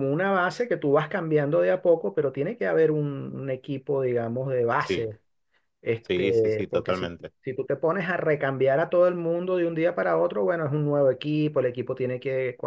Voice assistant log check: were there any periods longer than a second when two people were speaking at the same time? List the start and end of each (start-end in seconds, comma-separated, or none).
6.0-7.3